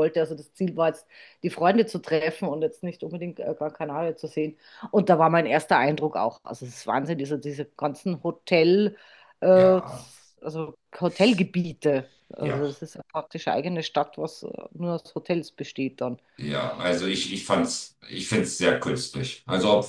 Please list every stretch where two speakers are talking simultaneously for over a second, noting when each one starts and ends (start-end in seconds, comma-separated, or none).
none